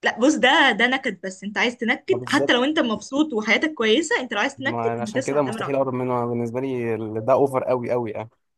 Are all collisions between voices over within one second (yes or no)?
no